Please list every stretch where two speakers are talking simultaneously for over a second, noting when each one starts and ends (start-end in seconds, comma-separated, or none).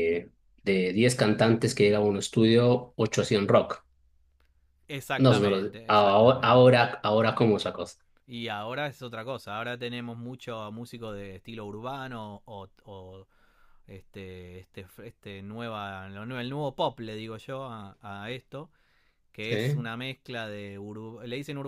5.2-6.8